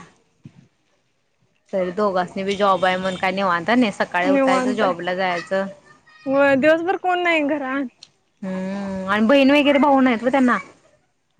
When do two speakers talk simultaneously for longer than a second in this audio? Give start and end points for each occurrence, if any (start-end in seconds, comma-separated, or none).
4.3-5.7